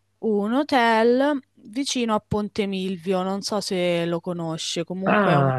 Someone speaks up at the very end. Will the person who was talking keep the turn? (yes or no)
no